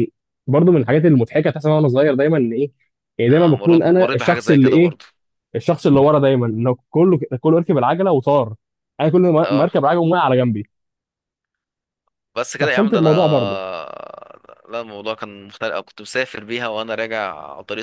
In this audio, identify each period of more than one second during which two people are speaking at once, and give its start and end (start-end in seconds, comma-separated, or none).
3.3-5.0